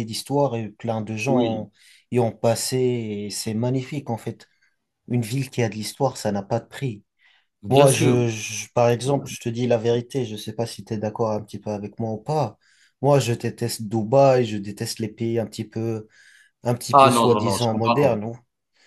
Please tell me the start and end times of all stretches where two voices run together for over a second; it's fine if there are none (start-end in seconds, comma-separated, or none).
16.9-18.3